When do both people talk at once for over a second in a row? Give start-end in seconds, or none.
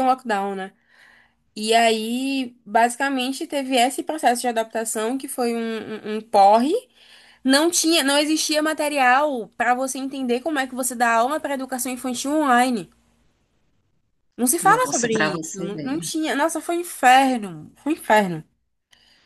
14.6-16.1